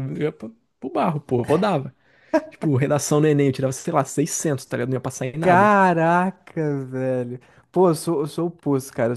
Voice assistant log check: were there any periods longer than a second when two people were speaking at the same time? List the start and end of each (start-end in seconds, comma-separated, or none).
none